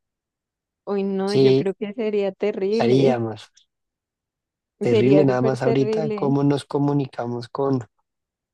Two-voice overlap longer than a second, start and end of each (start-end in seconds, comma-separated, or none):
4.9-6.3